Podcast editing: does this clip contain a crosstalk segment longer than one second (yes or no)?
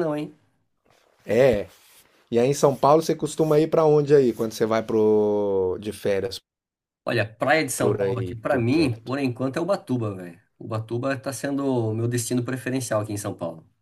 yes